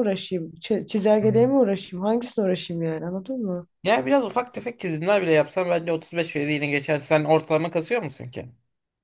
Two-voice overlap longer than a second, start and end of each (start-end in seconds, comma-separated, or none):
none